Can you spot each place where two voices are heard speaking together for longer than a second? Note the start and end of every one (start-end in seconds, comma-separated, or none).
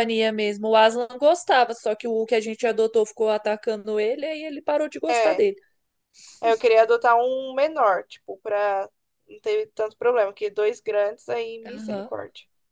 none